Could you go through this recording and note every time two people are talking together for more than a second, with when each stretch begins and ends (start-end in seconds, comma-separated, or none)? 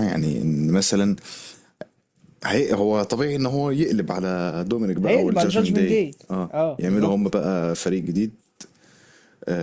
5.0-7.4